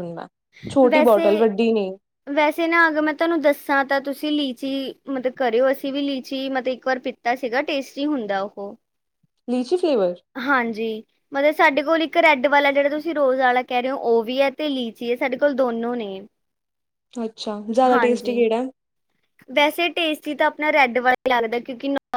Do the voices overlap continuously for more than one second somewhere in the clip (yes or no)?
no